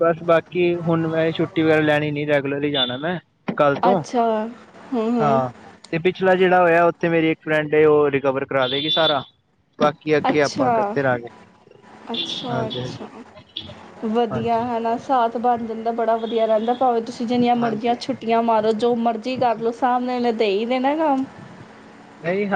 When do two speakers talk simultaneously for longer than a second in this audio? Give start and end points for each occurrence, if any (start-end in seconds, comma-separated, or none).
none